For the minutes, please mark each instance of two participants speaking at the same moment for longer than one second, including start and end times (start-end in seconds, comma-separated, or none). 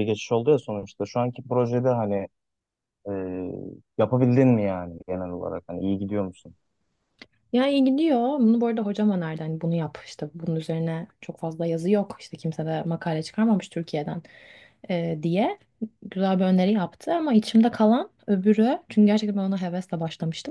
none